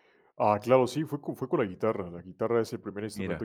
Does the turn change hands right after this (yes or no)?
no